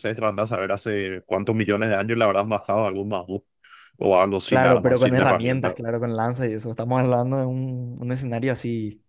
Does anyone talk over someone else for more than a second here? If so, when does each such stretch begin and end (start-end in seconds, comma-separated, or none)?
4.4-5.8